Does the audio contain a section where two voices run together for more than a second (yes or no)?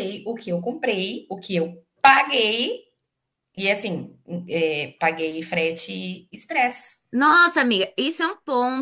no